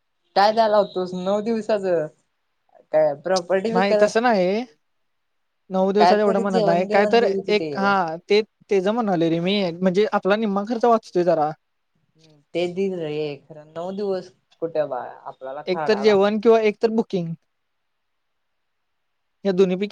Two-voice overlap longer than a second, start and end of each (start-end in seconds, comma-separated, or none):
6.0-7.7